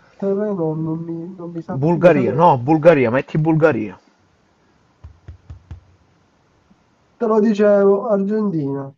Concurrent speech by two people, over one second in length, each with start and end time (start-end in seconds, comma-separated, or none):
none